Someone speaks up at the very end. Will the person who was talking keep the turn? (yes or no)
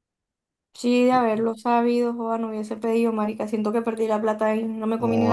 no